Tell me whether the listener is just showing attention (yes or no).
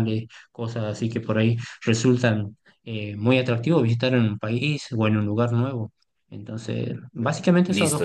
no